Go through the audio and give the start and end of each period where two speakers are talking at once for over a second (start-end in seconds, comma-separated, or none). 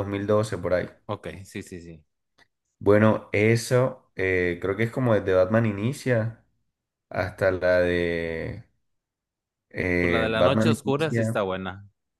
10.0-11.4